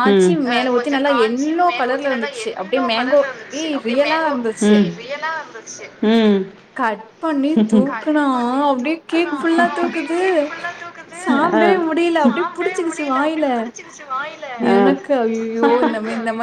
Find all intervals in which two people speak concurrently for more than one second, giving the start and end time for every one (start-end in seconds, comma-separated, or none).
0.5-4.3